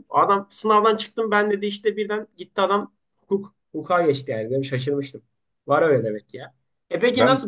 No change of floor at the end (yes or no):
yes